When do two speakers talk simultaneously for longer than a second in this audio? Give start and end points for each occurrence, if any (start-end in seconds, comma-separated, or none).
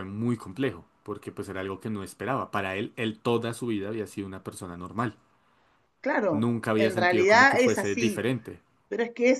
6.3-8.2